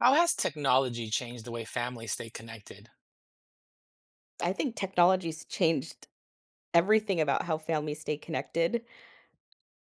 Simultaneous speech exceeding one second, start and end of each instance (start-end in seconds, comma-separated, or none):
none